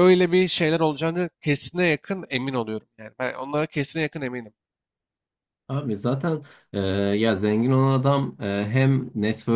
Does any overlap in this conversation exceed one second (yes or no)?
no